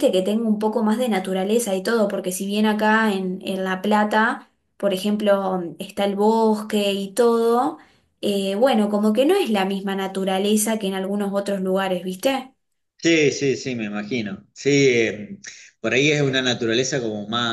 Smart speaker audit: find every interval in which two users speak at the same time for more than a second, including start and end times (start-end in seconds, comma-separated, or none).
none